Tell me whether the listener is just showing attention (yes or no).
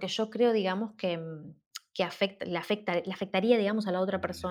yes